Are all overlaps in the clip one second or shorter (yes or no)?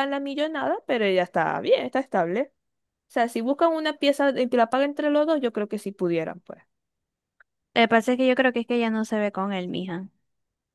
yes